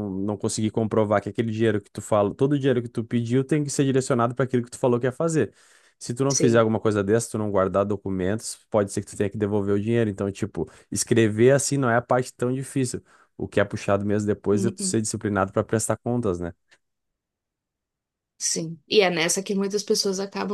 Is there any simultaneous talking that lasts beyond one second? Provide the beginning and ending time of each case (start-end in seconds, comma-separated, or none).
none